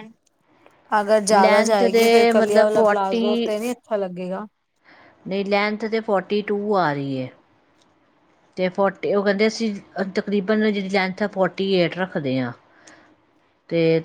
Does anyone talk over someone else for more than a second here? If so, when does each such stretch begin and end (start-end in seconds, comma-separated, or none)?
1.3-3.2